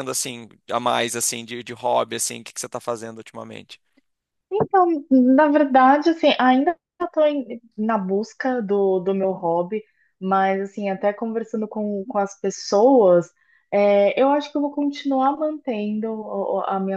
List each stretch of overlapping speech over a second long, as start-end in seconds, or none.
none